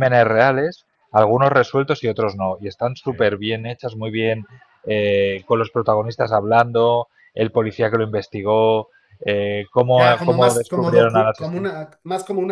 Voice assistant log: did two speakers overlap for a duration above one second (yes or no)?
yes